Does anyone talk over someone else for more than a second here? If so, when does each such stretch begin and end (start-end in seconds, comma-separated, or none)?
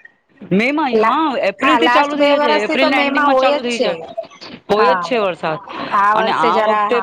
1.6-3.9